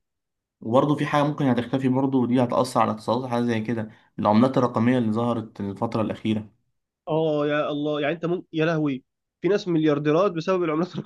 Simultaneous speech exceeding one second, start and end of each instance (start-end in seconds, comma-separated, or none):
none